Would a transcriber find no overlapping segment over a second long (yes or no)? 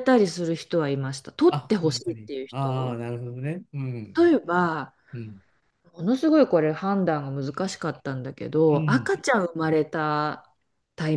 no